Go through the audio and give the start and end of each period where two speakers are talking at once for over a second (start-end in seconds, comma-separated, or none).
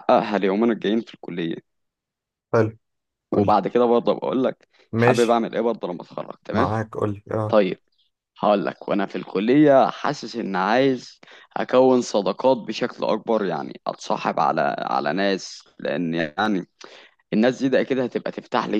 none